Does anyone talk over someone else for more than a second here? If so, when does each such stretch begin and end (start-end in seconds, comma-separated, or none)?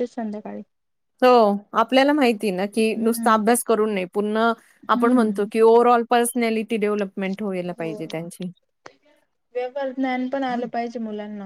none